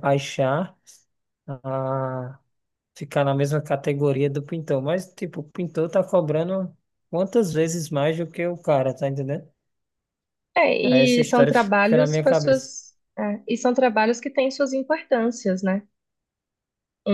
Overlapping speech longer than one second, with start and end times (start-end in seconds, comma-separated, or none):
10.8-12.7